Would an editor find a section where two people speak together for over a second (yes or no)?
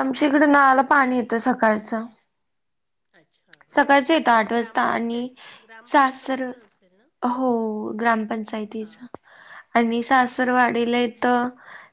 yes